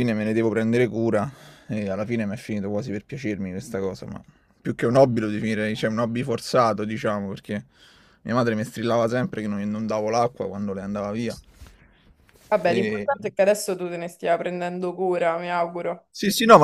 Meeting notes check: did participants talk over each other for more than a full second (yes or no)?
no